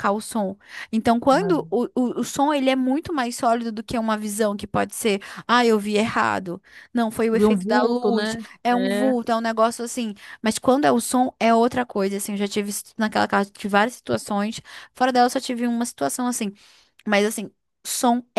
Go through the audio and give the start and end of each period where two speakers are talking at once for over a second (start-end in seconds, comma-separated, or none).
7.3-9.1